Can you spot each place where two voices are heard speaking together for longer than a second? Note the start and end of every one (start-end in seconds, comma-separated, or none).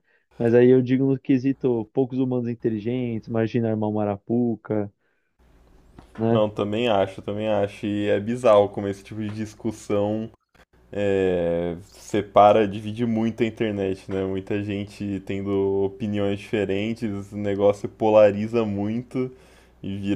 none